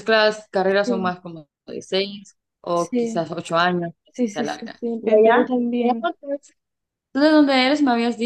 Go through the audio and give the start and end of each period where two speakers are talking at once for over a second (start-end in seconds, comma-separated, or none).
4.1-6.1